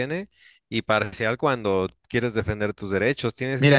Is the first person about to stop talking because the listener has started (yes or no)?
yes